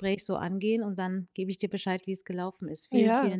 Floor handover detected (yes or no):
yes